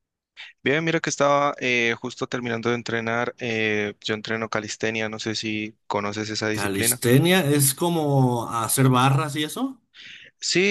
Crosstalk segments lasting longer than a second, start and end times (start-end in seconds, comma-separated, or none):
none